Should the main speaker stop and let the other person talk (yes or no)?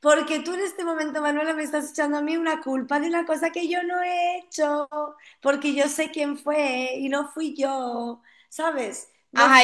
yes